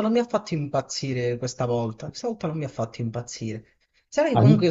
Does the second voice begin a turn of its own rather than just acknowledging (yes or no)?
no